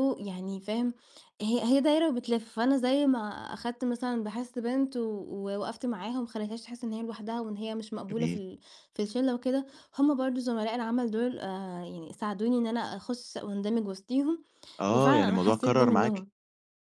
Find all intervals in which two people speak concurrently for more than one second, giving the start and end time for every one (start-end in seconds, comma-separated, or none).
14.9-16.3